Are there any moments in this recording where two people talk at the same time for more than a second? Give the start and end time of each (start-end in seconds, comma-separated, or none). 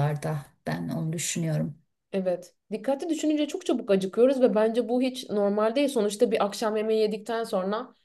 none